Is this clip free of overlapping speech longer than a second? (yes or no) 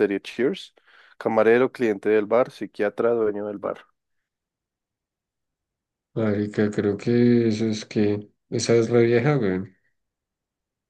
yes